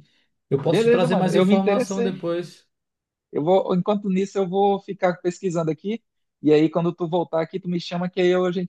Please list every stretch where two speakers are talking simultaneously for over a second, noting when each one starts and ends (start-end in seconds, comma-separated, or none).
0.6-2.1